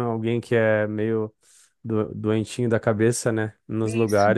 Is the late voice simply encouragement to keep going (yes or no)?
no